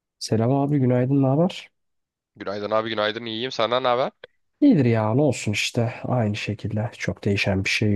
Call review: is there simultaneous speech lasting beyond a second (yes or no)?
no